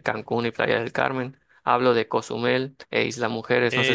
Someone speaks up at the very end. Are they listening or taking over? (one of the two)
taking over